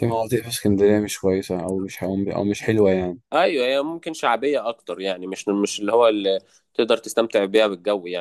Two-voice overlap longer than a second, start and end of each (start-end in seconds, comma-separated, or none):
none